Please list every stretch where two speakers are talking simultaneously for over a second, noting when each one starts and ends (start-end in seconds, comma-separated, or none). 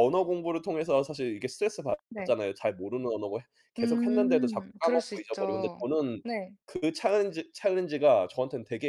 3.8-5.8